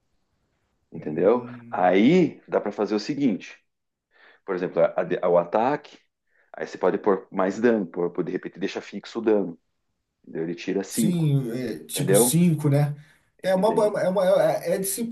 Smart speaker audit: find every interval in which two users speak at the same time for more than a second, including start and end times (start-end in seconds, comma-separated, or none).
0.9-2.2